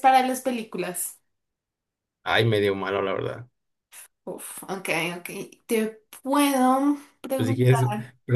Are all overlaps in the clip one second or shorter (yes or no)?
yes